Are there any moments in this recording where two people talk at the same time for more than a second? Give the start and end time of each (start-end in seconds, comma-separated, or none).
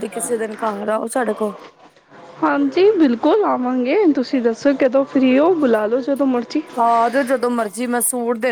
none